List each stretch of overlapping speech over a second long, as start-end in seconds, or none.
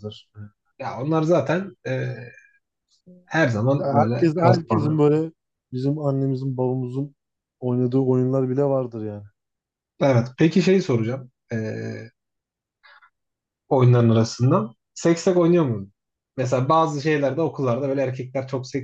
3.8-5.0